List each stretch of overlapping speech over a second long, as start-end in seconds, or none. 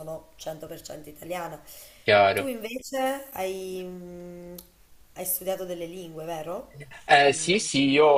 none